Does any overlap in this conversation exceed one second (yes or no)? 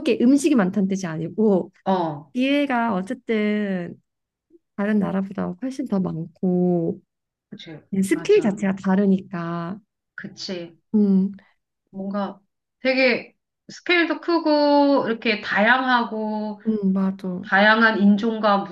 no